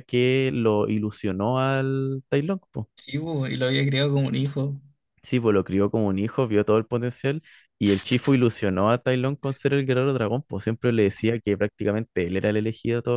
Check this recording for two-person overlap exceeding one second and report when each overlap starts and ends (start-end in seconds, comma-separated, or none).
none